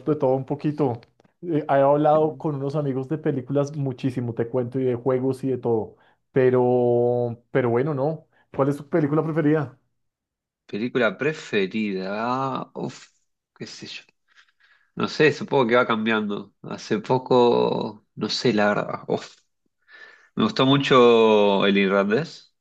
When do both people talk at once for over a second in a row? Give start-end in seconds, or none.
none